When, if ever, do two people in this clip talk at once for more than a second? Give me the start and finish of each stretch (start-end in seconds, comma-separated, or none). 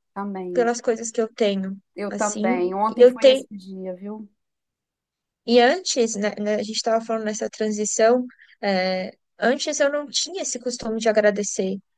1.9-3.5